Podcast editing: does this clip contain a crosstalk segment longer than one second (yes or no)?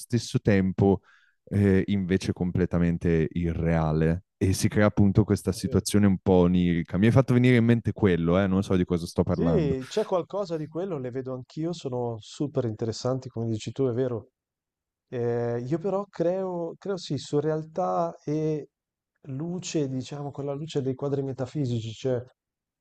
no